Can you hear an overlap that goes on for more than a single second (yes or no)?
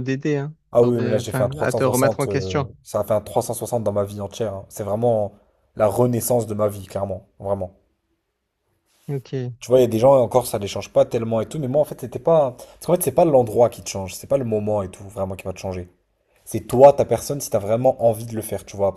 yes